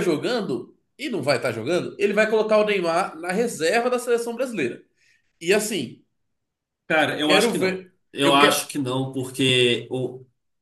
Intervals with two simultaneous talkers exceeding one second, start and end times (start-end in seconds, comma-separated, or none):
7.0-8.7